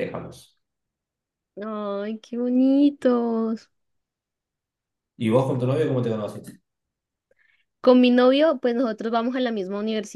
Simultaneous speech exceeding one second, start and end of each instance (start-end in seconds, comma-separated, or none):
none